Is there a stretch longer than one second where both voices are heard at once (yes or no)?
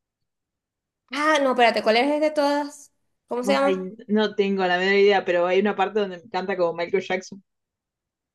no